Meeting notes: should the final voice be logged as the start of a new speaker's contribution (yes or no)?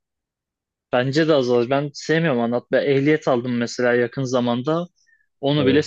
no